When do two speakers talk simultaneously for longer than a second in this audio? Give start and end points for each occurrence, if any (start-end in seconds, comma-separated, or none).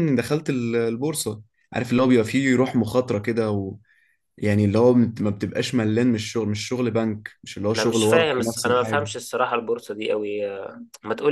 7.8-9.1